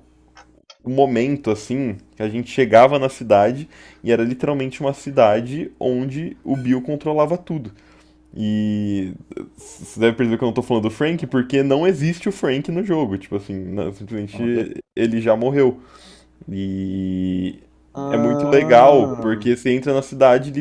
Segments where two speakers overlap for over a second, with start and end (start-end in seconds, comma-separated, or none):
18.1-19.5